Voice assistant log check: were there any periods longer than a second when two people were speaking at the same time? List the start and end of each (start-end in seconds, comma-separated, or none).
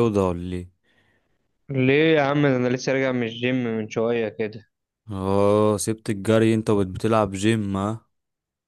none